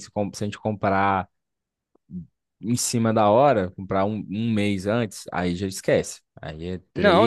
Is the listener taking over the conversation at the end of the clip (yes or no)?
yes